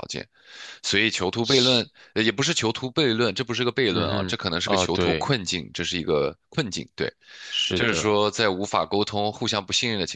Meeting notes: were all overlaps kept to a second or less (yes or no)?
no